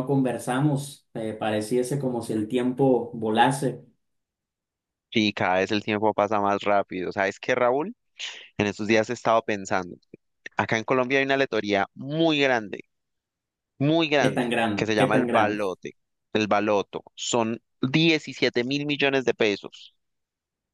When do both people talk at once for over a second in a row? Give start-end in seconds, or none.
14.2-15.6